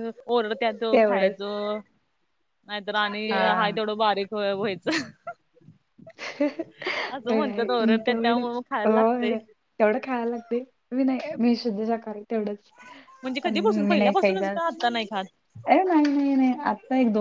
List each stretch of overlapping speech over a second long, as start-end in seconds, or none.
7.7-9.3, 13.5-14.8